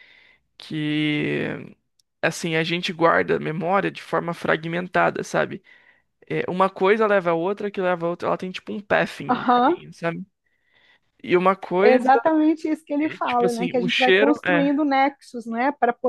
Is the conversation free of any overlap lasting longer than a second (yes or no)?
no